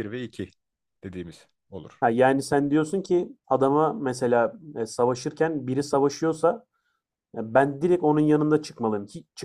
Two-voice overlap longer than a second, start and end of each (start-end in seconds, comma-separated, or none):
none